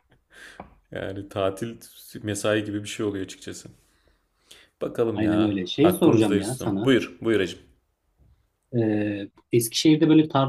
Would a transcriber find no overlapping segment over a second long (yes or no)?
no